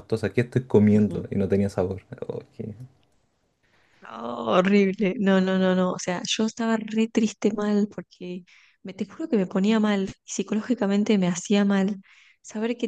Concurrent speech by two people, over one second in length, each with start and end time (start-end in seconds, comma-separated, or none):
none